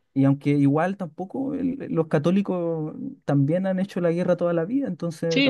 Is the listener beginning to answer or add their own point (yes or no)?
yes